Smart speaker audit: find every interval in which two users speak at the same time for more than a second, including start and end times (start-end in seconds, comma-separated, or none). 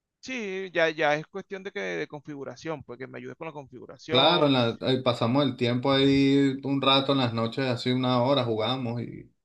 none